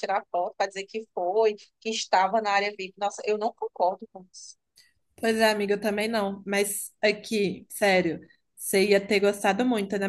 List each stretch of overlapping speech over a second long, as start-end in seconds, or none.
none